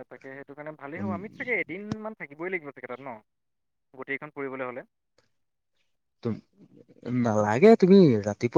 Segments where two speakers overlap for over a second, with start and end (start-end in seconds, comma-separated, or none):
none